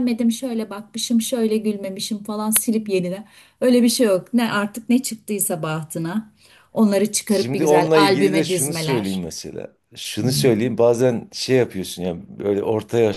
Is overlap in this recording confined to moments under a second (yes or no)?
no